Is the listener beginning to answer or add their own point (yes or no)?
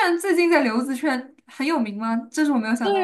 yes